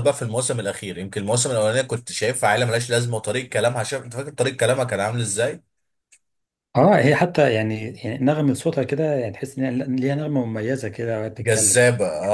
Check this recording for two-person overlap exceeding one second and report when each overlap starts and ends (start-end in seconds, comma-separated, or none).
none